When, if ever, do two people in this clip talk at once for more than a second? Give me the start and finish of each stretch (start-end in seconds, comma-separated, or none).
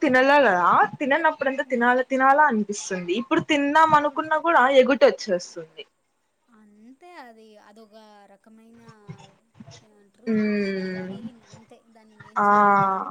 none